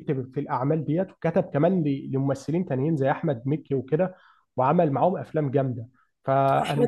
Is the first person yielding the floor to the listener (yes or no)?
yes